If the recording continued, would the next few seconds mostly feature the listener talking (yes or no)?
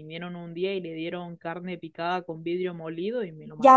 yes